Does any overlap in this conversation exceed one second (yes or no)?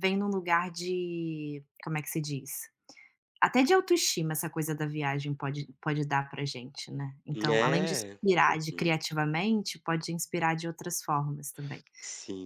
yes